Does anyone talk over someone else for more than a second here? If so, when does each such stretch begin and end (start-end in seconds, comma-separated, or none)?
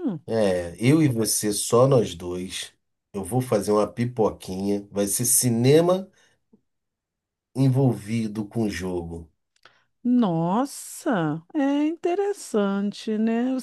none